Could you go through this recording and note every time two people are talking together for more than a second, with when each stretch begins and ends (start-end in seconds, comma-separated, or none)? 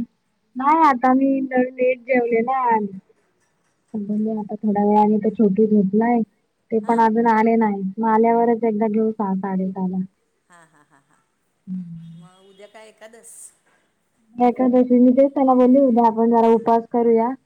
none